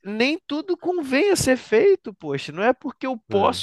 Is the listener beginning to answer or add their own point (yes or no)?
no